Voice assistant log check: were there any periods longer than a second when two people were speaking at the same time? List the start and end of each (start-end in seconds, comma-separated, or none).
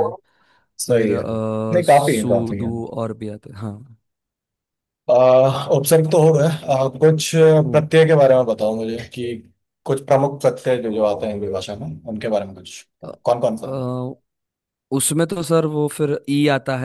0.9-2.7